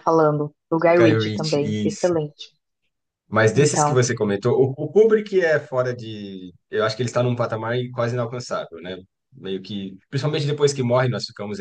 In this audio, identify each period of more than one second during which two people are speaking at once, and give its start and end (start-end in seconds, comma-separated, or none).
1.0-2.2